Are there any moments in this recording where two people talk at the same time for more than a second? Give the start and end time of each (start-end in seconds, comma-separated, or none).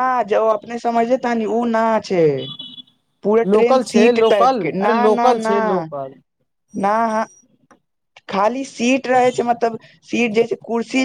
3.5-5.5